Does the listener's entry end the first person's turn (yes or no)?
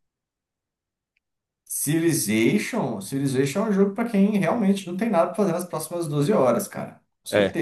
no